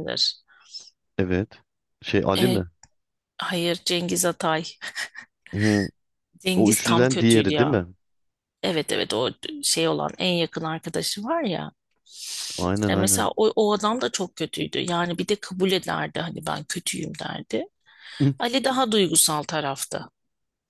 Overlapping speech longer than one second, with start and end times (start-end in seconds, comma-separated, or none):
6.6-7.8